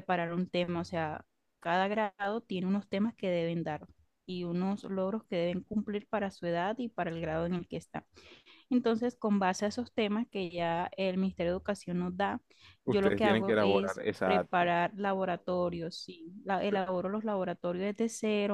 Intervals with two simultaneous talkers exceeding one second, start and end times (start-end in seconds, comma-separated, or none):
12.8-14.7